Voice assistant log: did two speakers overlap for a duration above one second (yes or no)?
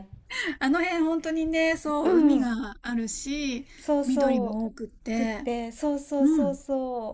yes